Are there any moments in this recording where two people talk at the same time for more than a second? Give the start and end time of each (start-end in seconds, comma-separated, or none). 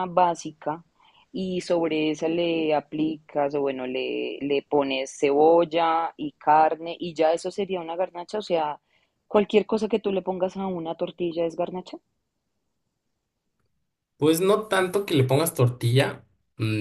none